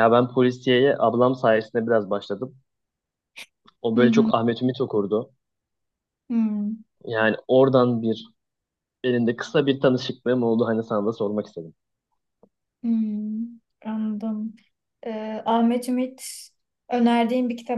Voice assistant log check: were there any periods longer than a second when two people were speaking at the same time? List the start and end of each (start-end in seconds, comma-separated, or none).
none